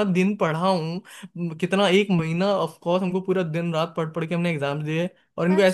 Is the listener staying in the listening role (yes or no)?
no